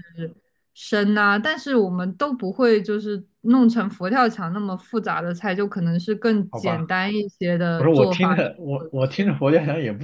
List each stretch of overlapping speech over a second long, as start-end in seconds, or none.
7.8-9.3